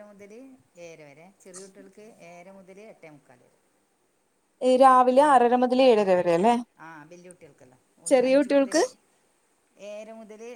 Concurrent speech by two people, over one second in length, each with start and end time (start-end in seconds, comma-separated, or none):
none